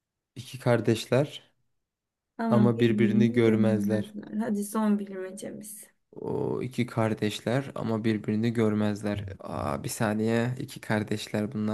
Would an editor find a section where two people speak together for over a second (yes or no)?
yes